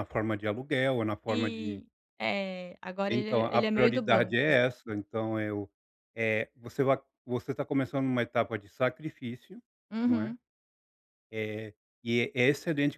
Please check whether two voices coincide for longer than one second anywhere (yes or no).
yes